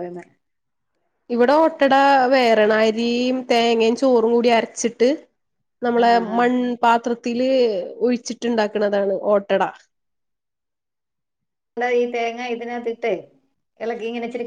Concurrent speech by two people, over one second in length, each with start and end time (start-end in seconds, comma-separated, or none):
none